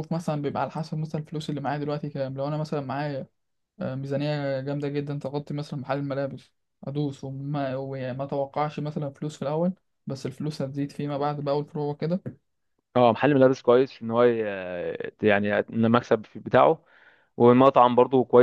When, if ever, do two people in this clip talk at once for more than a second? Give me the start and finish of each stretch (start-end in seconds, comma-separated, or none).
none